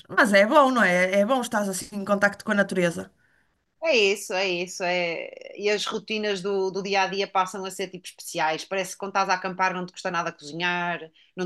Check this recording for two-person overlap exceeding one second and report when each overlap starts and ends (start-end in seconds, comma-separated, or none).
none